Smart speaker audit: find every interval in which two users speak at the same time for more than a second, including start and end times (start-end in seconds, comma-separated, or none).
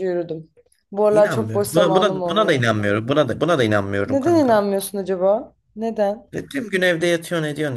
1.1-2.7